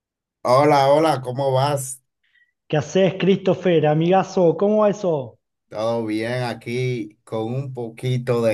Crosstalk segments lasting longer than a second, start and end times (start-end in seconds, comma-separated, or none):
none